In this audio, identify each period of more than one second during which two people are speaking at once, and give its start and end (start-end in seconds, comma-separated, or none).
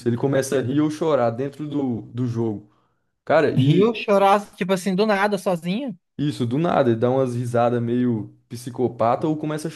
none